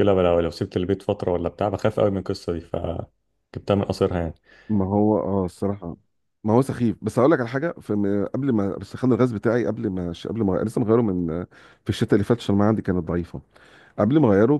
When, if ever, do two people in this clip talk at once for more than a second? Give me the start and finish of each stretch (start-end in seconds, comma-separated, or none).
none